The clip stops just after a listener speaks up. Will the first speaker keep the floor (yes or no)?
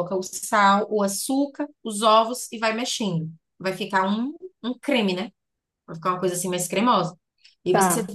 yes